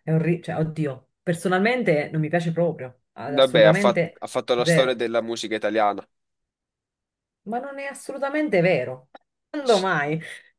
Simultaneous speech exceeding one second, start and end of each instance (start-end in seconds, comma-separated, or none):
3.3-5.0